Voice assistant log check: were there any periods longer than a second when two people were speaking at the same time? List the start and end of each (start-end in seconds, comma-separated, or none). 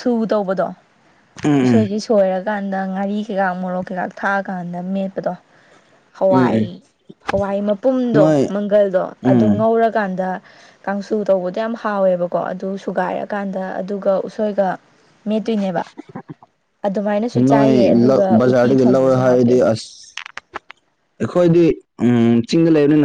17.5-19.6